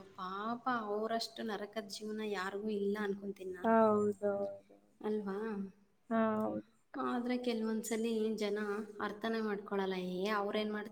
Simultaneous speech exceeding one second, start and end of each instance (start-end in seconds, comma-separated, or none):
none